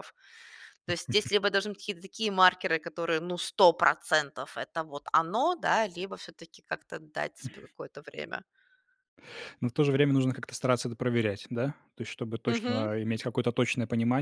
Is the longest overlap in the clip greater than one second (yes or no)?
no